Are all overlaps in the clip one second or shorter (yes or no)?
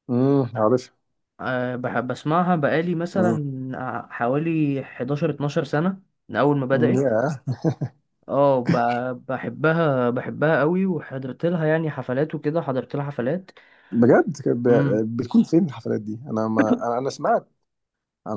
yes